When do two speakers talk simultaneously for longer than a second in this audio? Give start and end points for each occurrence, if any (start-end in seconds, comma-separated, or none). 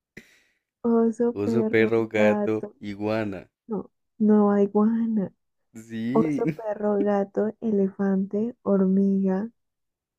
1.3-2.8